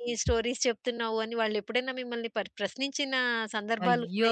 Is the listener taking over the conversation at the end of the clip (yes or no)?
yes